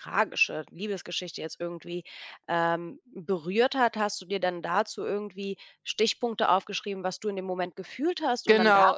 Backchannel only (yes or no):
no